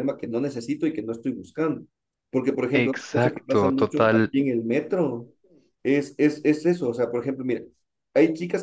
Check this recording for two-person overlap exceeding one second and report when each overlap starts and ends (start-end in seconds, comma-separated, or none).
2.7-4.3